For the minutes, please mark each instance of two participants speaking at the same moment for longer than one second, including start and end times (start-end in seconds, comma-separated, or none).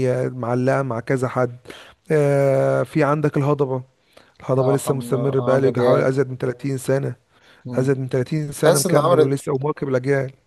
4.6-6.0